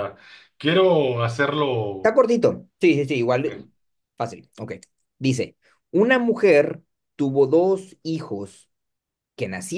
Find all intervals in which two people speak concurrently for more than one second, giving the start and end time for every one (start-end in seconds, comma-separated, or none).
none